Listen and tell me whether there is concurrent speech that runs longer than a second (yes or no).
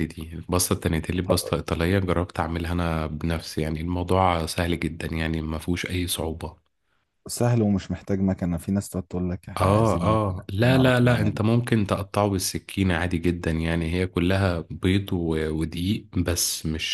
yes